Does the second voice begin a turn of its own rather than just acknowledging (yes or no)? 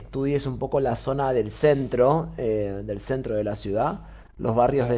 no